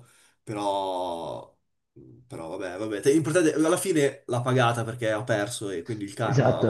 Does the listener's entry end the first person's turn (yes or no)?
yes